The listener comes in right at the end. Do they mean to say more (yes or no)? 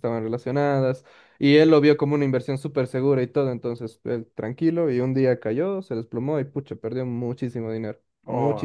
yes